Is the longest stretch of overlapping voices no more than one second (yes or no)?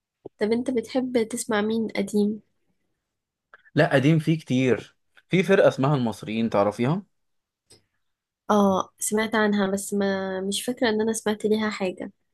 yes